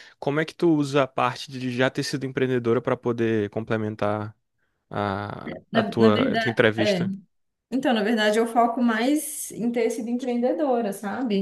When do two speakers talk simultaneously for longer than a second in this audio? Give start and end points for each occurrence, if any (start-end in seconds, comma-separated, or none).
5.7-7.0